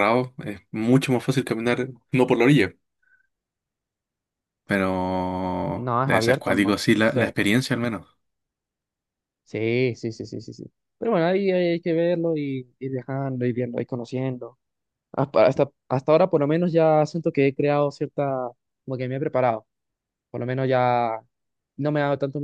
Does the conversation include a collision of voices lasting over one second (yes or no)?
yes